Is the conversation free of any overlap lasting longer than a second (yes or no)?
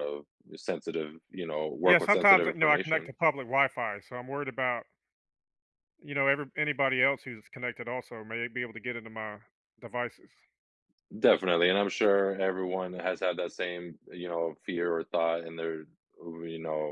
no